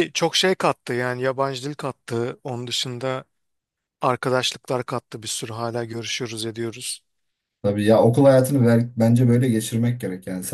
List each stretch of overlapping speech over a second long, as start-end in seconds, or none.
none